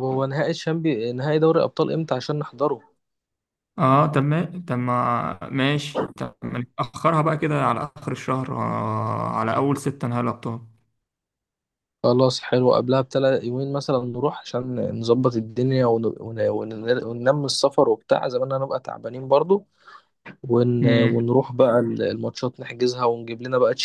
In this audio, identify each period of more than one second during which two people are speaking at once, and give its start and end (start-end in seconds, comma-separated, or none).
none